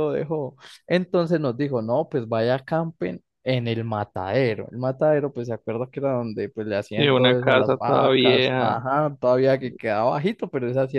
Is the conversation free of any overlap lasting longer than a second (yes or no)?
no